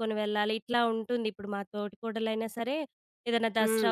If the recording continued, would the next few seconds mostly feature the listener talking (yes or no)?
no